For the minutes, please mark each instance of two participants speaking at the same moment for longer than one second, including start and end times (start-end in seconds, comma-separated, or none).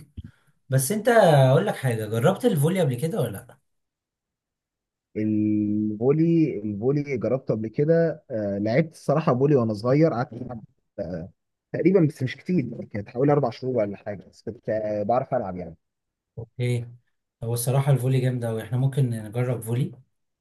none